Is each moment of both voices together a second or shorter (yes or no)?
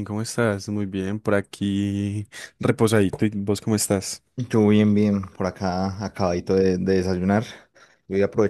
yes